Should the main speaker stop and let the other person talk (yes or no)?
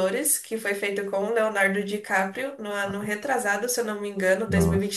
yes